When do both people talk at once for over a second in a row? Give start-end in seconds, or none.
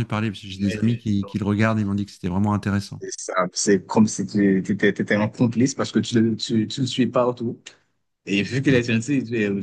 none